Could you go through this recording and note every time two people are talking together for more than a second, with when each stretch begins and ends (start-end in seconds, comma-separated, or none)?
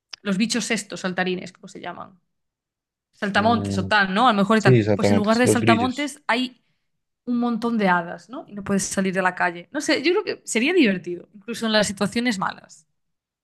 4.5-6.1